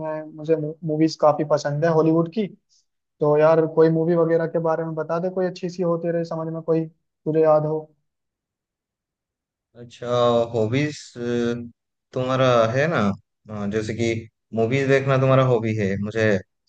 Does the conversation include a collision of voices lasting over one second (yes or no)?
no